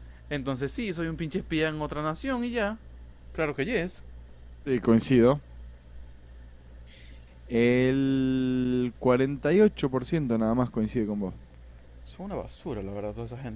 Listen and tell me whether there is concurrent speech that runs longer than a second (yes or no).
no